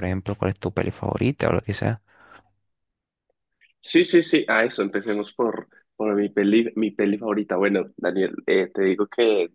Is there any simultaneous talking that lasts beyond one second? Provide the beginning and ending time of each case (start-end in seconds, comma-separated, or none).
none